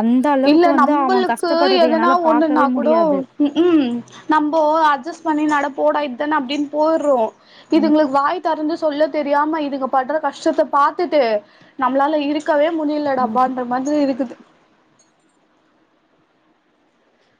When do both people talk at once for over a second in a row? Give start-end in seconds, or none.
0.5-2.9